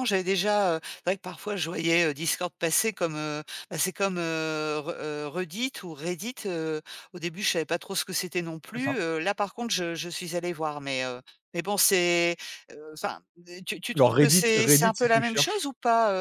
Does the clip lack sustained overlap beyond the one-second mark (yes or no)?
no